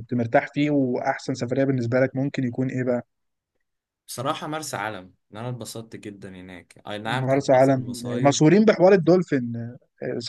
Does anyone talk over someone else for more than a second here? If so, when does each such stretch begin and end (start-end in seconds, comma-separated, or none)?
7.1-8.4